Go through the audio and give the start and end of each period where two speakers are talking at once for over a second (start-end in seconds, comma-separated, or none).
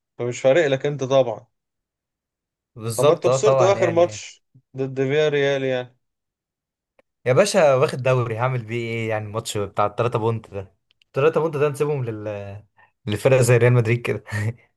3.0-4.2